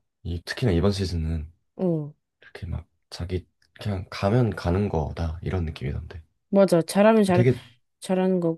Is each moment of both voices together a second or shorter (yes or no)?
yes